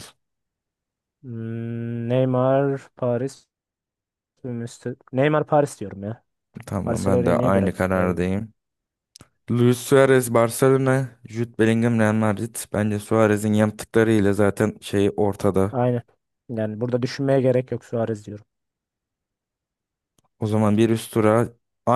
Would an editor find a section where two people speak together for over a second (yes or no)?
yes